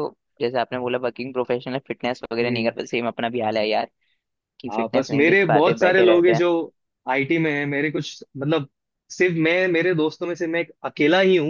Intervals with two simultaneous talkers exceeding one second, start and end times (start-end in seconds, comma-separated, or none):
4.7-6.4